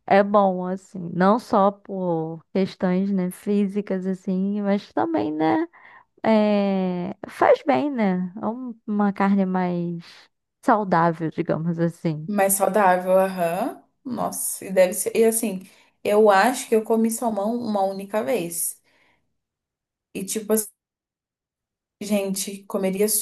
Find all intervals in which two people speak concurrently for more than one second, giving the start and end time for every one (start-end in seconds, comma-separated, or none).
none